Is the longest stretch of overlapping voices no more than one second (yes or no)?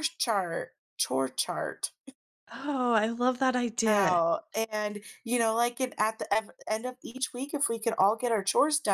yes